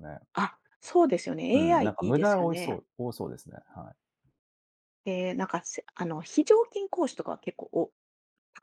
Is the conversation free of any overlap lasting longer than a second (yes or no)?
no